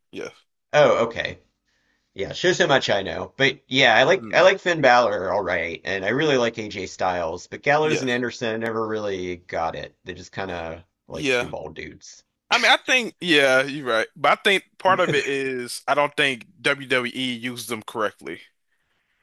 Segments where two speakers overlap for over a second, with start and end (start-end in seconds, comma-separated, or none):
none